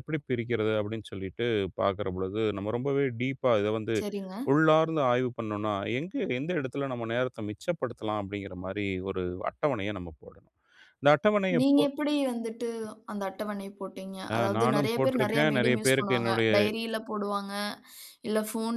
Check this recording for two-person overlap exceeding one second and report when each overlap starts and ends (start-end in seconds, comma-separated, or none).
14.3-16.5